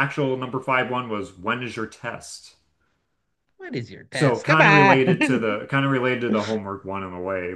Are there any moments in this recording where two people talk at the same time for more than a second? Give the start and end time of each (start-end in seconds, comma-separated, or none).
4.1-5.5